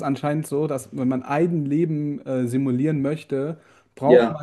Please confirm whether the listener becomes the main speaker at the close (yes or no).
no